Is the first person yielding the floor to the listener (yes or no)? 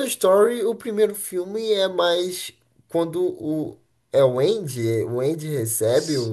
no